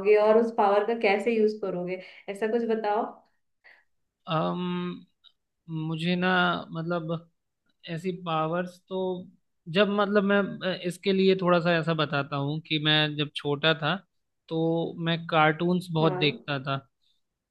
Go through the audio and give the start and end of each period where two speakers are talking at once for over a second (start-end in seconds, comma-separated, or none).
none